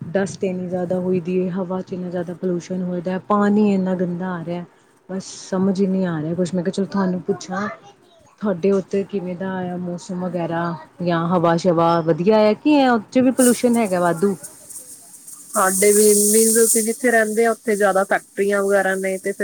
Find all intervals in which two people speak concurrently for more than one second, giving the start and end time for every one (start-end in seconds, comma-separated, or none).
none